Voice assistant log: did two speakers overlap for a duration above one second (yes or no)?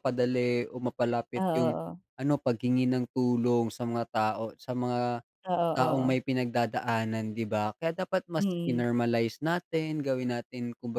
no